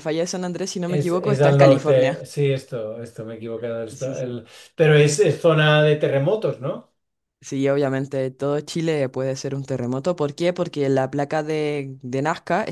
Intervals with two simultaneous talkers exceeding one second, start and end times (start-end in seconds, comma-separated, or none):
0.9-2.2